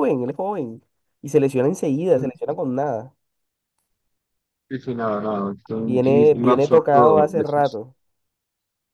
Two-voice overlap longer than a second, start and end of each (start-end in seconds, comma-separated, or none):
5.8-7.8